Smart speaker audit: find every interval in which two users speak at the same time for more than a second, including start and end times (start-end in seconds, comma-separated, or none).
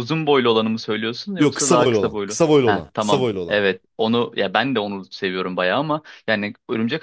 1.4-3.6